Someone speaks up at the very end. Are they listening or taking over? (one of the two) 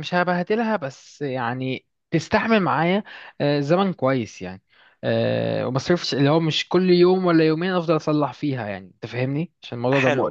taking over